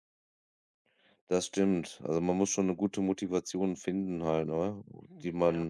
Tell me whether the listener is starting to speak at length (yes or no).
no